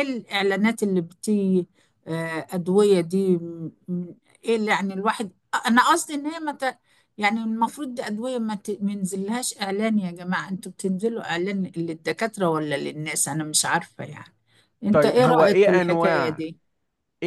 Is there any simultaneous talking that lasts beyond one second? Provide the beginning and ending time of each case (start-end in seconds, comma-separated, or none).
14.9-16.4